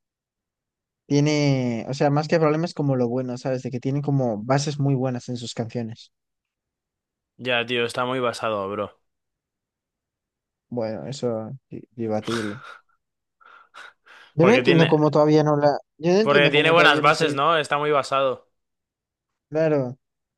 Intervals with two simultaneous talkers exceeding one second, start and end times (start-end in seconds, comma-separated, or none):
16.2-17.4